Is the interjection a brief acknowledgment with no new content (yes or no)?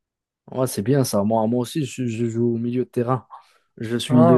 yes